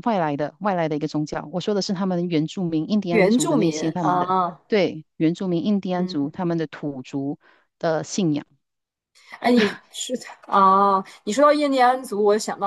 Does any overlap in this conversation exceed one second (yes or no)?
yes